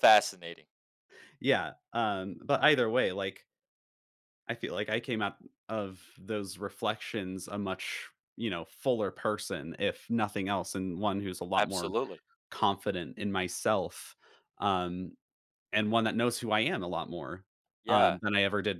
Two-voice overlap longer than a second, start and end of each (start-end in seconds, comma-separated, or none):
none